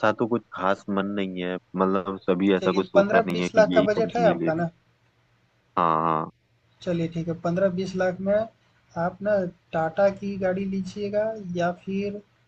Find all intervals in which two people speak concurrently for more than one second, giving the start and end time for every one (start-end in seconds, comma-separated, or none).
2.6-4.6